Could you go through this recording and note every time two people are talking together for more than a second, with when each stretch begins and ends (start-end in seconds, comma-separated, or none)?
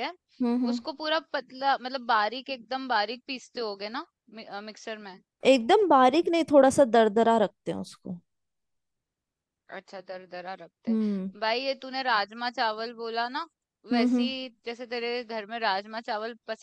none